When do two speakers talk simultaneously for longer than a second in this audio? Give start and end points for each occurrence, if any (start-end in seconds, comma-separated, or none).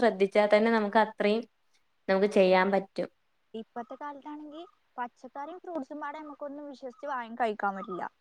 none